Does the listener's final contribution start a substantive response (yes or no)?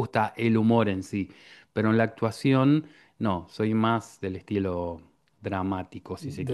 yes